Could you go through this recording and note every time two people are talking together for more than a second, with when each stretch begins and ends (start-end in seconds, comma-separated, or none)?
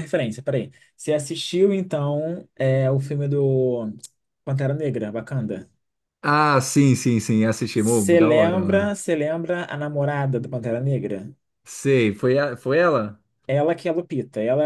7.7-9.0